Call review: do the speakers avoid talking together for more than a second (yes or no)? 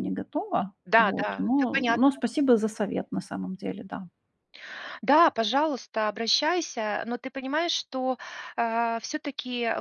no